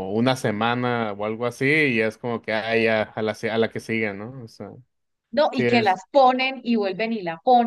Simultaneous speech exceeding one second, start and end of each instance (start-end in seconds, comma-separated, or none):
none